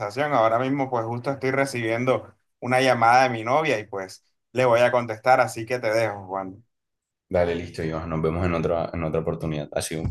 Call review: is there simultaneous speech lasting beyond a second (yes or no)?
no